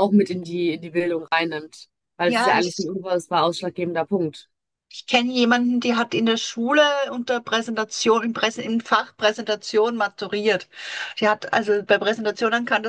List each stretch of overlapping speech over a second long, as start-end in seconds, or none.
none